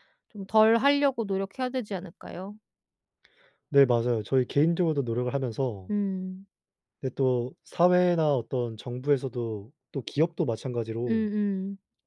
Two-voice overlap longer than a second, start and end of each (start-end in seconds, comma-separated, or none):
none